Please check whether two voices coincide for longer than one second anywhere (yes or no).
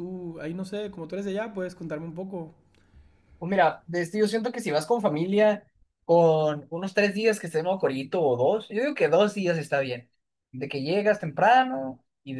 no